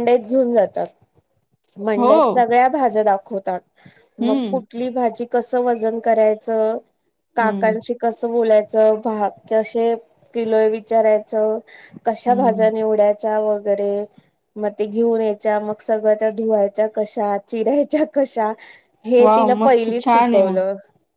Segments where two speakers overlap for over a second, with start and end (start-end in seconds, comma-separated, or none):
19.2-20.6